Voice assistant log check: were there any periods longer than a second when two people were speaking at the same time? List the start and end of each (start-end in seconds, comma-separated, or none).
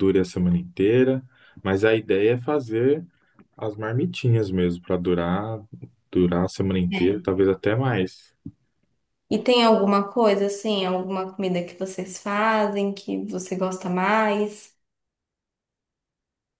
none